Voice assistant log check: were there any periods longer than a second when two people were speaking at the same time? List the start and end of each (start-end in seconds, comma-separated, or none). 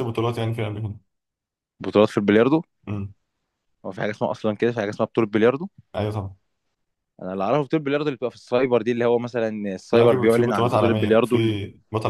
9.9-11.6